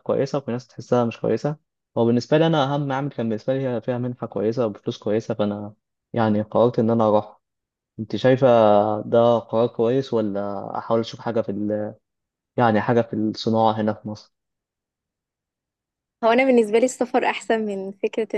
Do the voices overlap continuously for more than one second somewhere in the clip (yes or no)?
no